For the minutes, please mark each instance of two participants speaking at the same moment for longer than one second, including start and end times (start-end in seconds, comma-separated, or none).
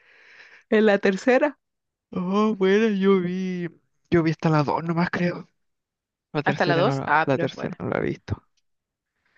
6.5-7.8